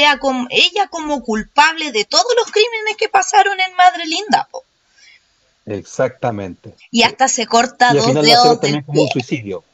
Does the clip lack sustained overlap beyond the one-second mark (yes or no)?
no